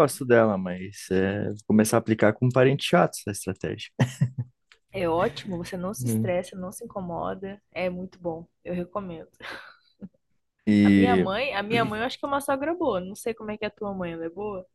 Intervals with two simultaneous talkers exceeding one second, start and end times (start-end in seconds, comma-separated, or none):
none